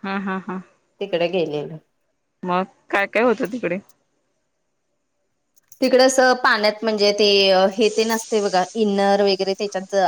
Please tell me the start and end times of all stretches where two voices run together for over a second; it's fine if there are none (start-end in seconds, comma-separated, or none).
none